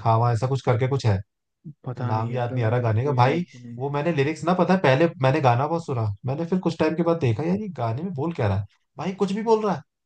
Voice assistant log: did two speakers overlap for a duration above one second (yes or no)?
yes